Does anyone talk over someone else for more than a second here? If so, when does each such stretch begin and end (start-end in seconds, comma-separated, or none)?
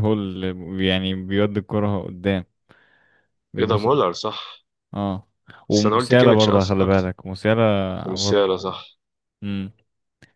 5.7-7.1